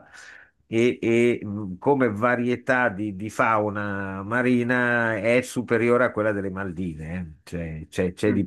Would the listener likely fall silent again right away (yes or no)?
yes